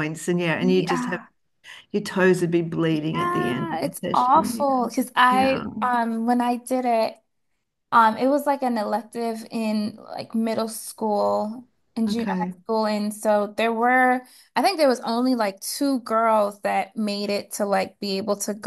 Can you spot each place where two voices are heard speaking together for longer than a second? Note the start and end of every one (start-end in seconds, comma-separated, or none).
3.2-4.5